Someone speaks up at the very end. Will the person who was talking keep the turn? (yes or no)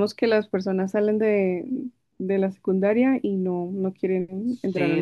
no